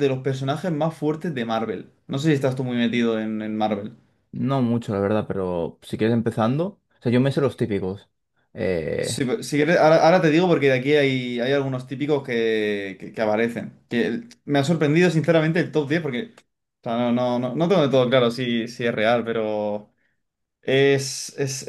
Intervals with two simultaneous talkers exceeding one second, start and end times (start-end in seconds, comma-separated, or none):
none